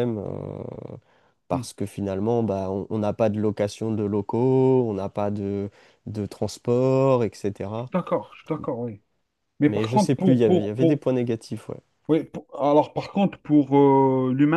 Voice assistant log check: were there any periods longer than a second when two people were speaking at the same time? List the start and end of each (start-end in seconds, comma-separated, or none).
9.6-11.0